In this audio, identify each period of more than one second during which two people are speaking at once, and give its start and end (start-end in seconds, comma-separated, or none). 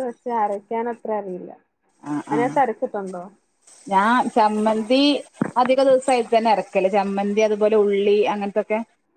none